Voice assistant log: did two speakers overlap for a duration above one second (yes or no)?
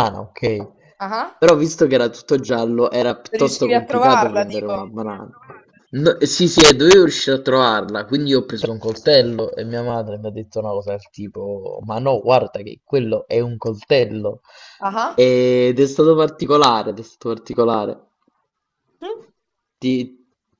yes